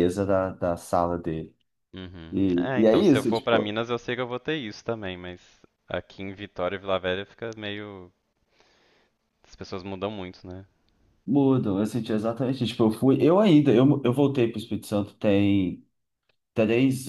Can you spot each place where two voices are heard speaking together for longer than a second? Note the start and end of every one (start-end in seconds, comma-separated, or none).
2.3-3.7